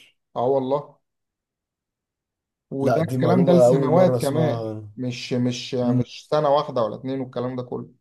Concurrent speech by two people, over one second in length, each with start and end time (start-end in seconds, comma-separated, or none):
2.8-4.9